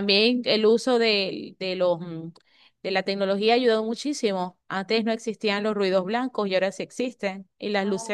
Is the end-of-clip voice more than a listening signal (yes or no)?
no